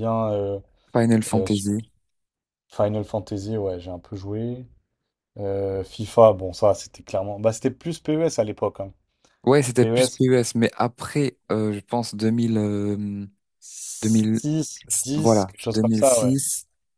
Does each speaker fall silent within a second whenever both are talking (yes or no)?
no